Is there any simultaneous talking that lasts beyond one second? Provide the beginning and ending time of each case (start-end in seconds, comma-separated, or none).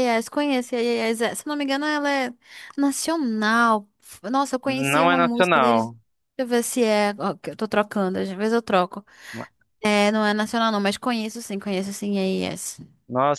4.6-6.0